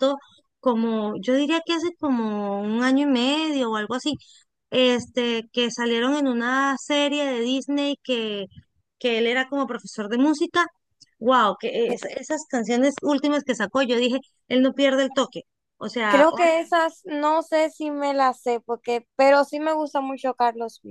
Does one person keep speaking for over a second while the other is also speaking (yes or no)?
no